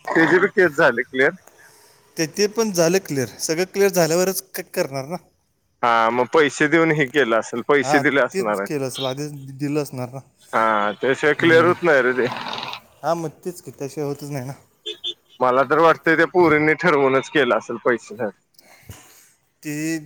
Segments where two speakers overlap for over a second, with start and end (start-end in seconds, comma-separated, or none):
none